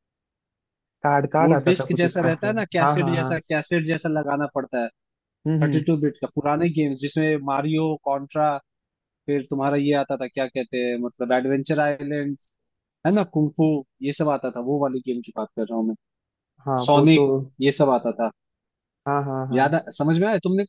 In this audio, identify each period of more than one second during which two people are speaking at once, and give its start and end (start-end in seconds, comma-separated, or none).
1.4-3.4